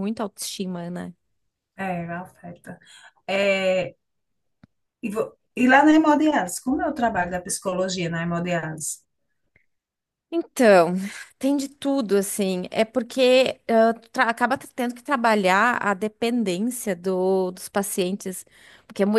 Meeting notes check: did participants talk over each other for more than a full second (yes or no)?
no